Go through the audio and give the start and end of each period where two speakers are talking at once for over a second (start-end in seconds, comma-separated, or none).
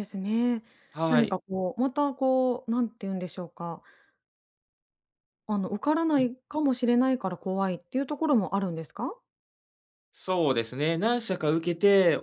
none